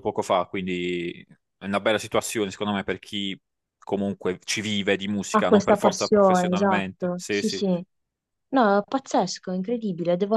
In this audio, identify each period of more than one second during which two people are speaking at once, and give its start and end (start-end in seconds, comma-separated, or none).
5.3-7.6